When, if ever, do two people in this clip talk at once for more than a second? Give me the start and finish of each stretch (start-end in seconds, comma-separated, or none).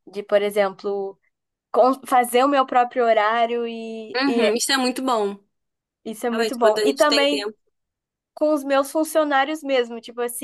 6.3-7.5